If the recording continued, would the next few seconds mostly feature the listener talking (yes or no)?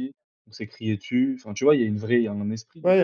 yes